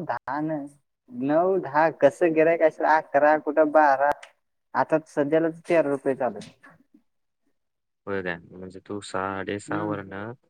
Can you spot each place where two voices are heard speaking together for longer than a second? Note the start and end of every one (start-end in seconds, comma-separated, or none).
none